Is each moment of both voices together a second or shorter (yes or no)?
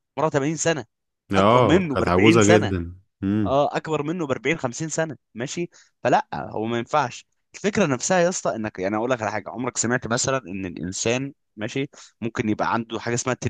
no